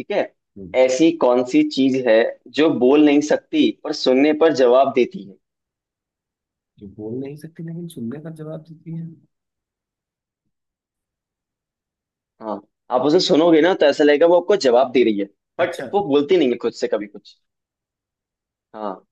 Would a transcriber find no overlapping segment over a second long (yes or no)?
yes